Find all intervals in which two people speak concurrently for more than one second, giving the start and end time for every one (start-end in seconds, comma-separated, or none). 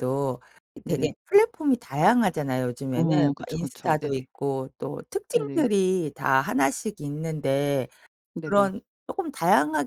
2.9-4.3